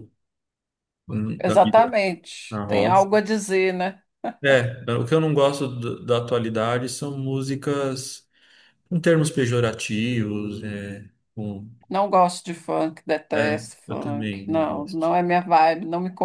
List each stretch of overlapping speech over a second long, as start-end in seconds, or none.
13.3-15.1